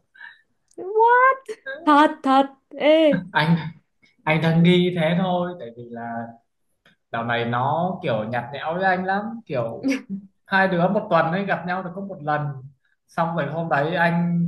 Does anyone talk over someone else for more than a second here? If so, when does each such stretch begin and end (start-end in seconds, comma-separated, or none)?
none